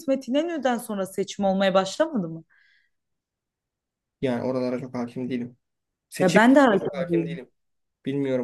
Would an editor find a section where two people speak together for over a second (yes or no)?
yes